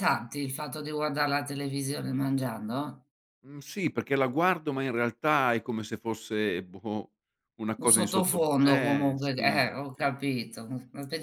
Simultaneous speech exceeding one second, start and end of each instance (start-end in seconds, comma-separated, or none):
7.8-10.1